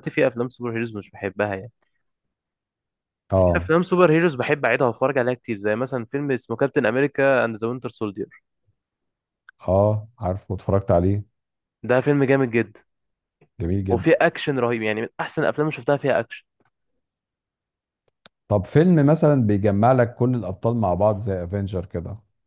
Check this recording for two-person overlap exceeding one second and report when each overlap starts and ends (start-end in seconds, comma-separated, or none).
none